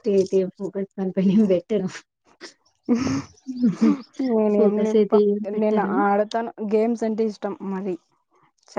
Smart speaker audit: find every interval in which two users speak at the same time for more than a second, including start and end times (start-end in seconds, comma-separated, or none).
none